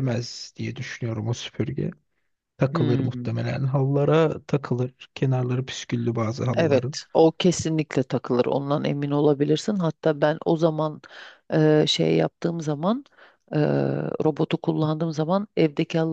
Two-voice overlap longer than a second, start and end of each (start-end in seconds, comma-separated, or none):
none